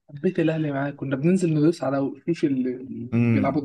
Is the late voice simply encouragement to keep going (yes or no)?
no